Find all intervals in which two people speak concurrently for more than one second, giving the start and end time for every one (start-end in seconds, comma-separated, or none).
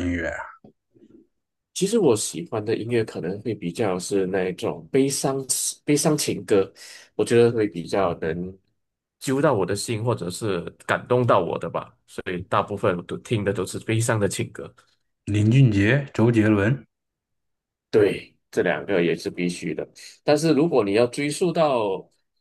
none